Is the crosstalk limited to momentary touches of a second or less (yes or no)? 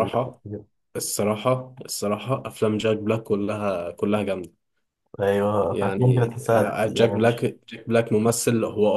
no